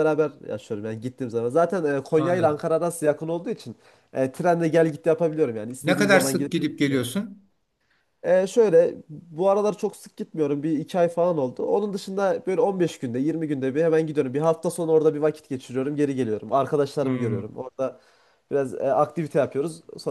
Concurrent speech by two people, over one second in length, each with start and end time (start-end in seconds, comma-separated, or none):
5.8-7.1